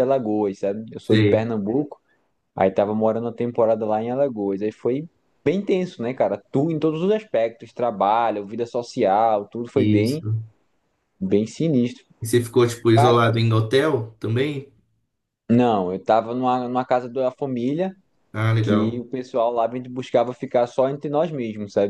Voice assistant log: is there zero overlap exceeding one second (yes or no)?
yes